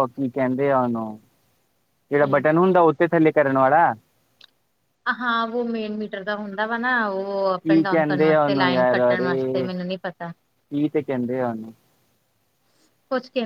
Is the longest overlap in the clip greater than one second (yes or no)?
yes